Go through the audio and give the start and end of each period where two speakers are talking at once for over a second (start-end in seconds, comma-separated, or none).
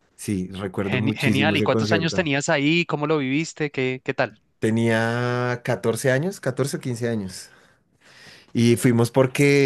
0.8-2.3